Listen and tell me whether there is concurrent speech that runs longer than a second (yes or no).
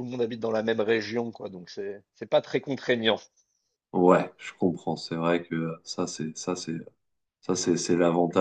no